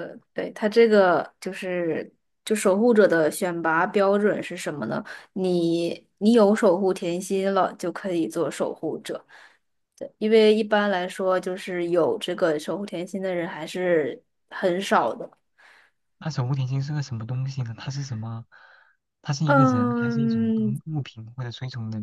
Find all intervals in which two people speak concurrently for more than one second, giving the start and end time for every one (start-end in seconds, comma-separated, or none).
19.4-20.8